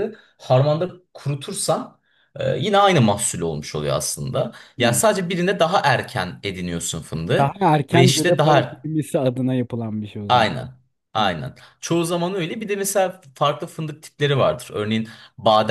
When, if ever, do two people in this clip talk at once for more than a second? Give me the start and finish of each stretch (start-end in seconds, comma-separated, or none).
7.4-8.9